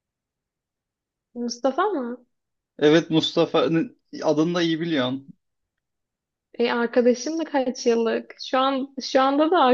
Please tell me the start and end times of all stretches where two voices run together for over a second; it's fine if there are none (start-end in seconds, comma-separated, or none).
none